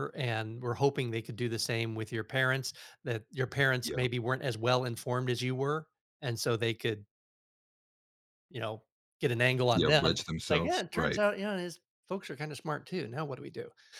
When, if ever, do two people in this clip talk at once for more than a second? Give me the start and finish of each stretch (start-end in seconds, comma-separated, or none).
9.7-11.2